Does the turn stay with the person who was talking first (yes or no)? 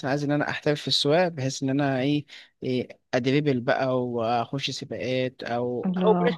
yes